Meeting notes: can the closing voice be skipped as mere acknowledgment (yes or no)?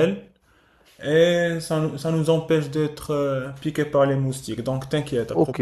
no